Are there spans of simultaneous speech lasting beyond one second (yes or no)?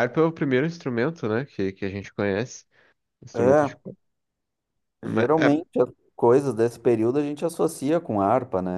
no